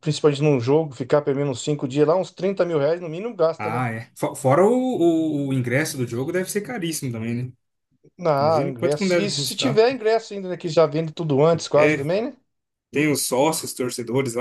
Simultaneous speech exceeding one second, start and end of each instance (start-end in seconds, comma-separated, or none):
8.4-9.8